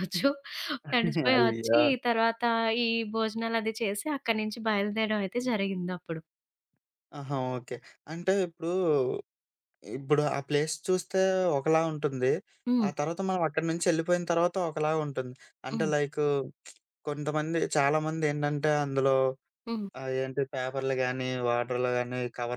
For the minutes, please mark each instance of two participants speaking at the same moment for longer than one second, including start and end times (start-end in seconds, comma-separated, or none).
none